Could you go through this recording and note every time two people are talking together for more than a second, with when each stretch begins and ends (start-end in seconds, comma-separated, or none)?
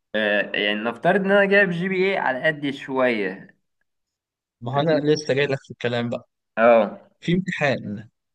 none